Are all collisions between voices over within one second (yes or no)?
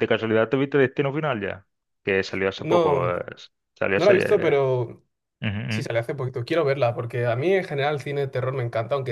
yes